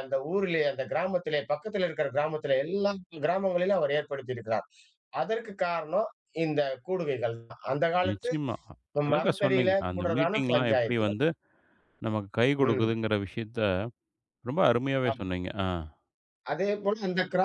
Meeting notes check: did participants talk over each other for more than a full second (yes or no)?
yes